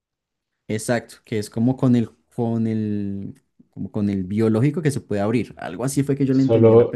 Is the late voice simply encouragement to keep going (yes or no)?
no